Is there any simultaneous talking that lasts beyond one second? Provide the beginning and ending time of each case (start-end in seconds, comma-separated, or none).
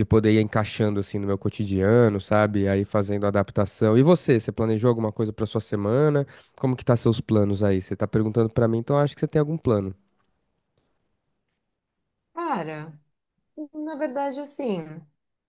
none